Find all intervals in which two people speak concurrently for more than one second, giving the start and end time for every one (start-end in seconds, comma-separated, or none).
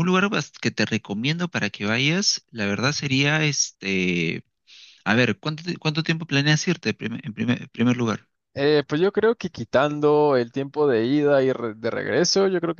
none